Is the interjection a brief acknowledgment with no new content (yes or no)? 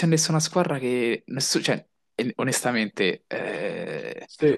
yes